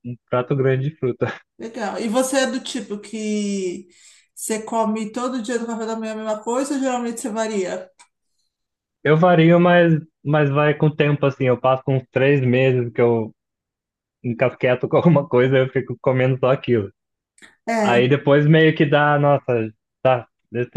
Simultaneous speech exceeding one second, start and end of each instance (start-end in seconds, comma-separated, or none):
none